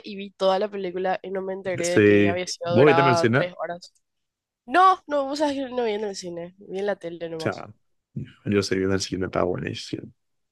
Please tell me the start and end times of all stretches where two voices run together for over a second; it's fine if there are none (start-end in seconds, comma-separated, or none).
1.8-3.5